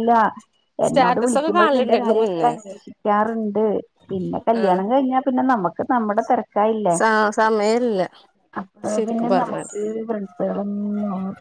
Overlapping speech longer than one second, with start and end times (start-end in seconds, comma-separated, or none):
0.9-2.5